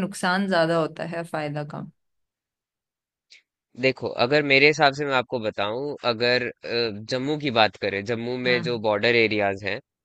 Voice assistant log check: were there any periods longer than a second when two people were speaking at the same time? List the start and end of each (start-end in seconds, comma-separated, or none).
none